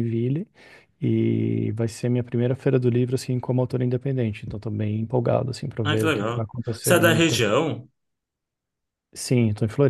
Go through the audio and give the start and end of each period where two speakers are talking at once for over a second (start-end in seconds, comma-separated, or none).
5.8-7.4